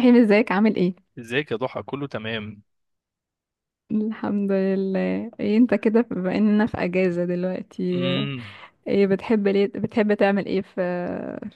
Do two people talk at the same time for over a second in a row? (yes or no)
no